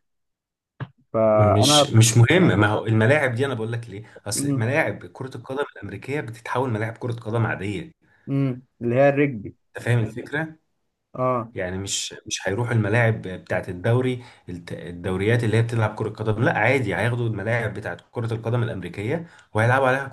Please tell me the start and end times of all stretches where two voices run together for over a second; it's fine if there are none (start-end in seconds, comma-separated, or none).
none